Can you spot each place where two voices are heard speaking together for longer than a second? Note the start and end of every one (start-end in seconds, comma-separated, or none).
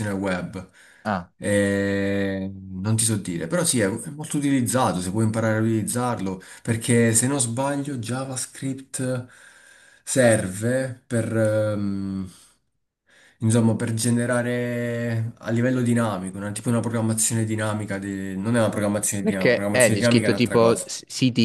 19.2-20.9